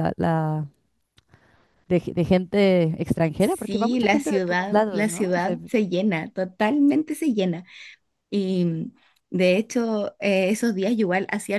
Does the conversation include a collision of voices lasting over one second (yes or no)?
yes